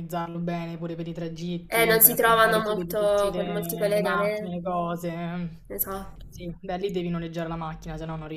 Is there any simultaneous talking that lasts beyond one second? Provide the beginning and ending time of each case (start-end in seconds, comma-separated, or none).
1.7-4.5